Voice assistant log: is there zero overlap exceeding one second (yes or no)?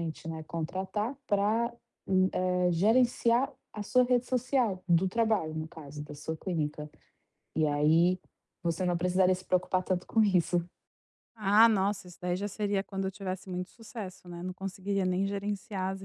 yes